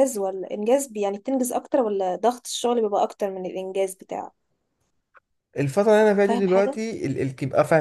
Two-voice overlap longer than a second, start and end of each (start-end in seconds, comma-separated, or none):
none